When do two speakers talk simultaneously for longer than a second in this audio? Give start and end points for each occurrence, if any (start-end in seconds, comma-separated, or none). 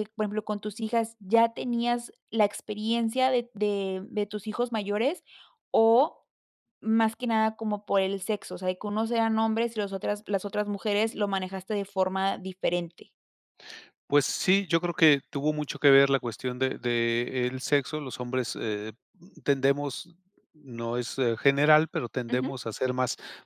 none